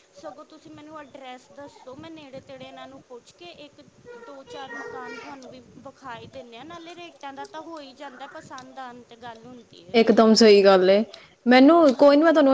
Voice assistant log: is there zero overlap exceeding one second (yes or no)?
yes